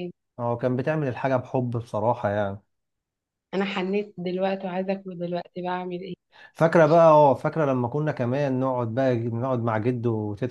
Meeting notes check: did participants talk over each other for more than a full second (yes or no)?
no